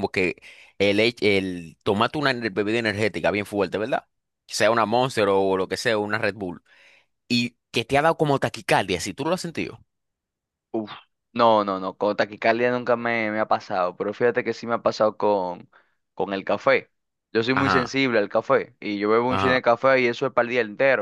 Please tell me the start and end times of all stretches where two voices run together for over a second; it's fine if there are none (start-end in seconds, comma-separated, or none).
none